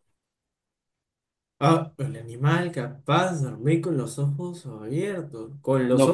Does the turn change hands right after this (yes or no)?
yes